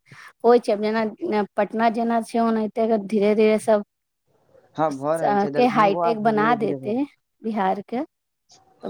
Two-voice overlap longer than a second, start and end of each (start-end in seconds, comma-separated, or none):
5.2-6.9